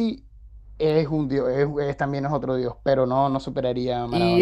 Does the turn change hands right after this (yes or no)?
yes